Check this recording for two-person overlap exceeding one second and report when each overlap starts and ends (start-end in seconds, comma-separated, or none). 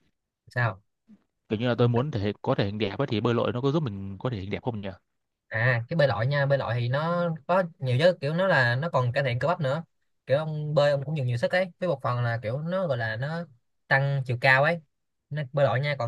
none